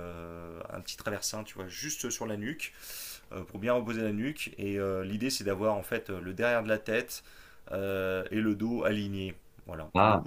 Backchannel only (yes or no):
yes